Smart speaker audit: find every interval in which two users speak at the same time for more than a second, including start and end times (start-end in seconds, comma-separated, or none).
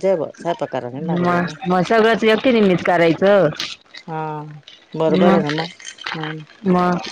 none